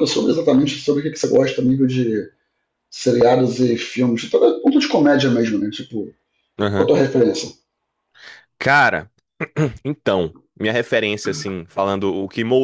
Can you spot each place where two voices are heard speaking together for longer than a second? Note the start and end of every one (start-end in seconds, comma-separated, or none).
none